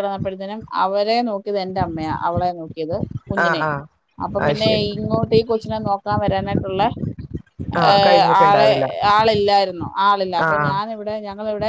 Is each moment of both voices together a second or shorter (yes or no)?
yes